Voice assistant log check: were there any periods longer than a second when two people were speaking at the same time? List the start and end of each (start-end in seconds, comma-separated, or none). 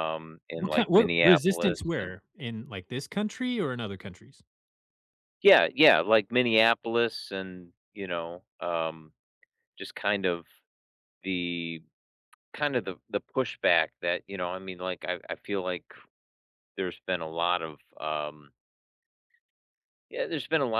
0.6-2.1